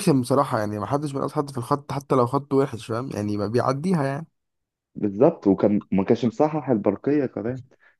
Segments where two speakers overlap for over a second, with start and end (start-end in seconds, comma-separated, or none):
none